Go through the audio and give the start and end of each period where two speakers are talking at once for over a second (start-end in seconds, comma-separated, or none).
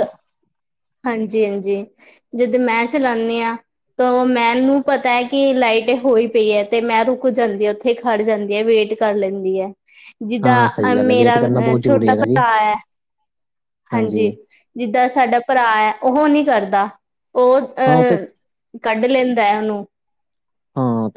10.4-12.4